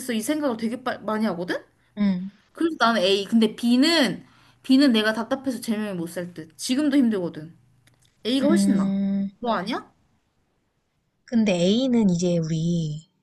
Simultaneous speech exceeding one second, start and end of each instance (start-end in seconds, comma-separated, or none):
none